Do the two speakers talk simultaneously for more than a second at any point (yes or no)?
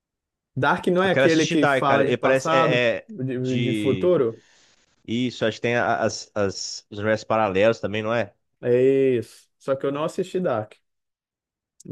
yes